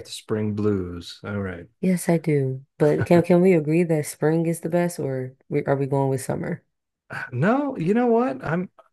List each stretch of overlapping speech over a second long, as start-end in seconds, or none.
none